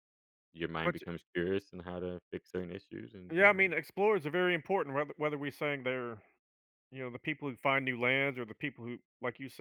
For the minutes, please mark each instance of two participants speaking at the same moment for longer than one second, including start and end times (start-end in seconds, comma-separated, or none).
none